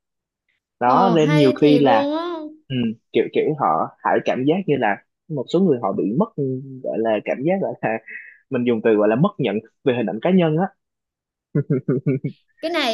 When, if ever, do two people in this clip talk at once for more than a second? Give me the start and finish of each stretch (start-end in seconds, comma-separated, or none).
0.8-2.1